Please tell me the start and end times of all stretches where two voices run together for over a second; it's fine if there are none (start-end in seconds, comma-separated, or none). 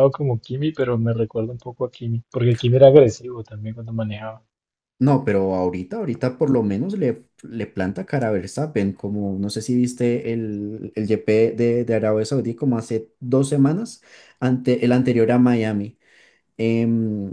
none